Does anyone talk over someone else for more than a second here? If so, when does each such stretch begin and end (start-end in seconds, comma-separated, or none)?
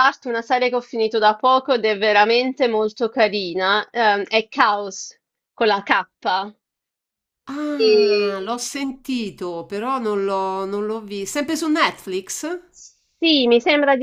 none